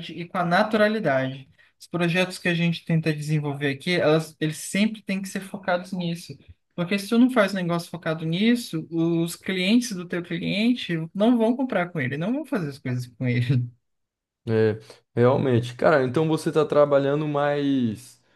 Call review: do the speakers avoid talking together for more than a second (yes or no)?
yes